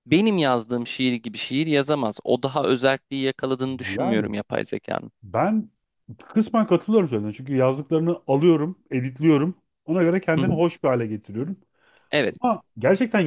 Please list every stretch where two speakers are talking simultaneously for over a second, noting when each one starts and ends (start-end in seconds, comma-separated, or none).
none